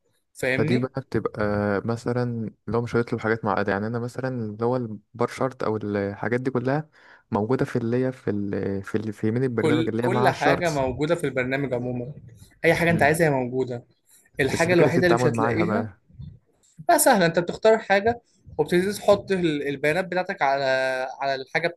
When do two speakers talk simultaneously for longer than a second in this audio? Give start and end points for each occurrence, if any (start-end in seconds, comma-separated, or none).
9.6-10.8, 14.5-15.9